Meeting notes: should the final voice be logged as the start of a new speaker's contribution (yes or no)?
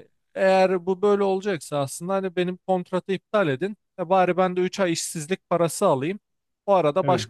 no